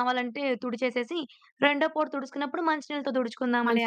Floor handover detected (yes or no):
yes